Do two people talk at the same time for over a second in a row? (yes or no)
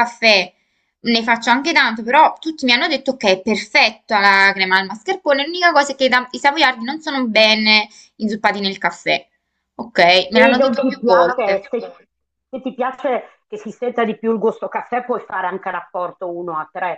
yes